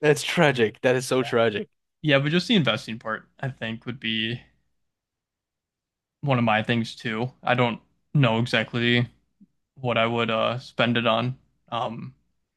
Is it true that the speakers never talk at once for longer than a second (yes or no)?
yes